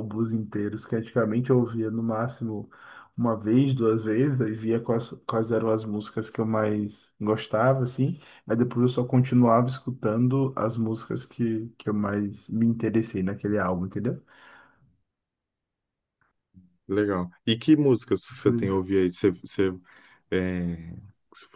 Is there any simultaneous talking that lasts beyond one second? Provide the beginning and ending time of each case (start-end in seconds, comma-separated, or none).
none